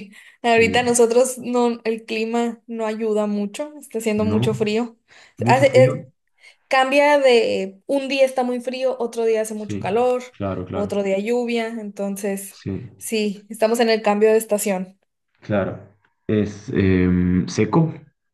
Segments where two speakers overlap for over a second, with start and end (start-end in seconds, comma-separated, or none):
none